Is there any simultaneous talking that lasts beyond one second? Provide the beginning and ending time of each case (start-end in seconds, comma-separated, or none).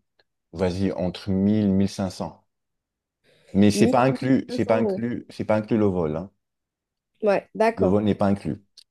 3.7-5.1